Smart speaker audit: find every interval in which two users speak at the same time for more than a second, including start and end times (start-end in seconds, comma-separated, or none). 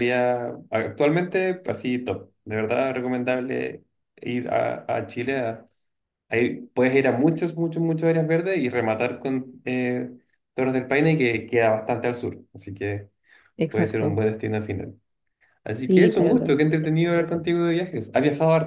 15.8-17.4